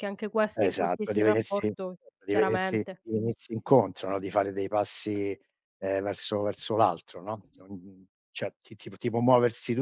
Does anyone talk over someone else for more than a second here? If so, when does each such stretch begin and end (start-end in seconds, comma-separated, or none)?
0.6-3.0